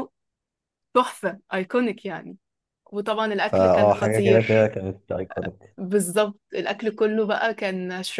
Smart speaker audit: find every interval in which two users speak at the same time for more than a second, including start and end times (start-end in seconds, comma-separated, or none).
3.5-4.7